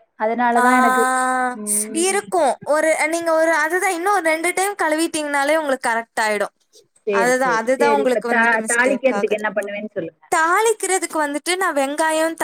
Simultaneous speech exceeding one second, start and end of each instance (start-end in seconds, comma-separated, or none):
7.2-9.4